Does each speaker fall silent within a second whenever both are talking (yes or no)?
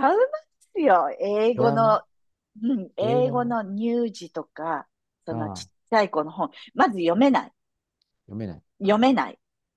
yes